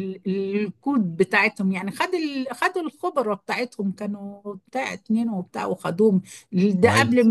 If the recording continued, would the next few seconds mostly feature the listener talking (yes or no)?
no